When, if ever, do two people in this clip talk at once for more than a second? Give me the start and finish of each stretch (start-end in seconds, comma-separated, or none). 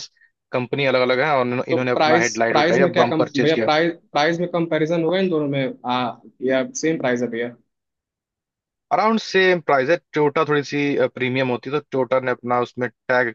1.7-3.7